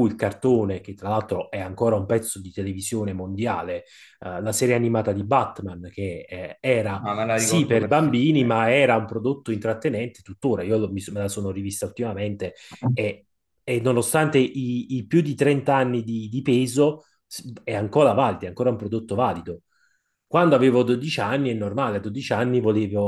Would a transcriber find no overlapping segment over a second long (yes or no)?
no